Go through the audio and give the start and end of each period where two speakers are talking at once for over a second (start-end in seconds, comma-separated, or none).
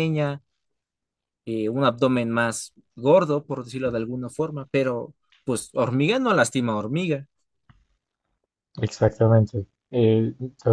none